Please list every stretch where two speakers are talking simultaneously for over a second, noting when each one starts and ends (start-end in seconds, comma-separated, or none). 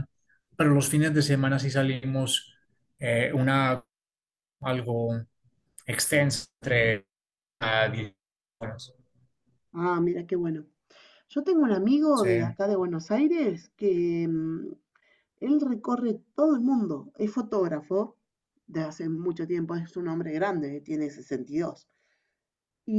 none